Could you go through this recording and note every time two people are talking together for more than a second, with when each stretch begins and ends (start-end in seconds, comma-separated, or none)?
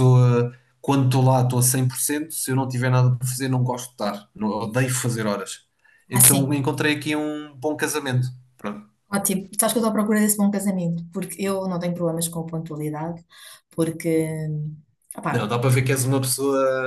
none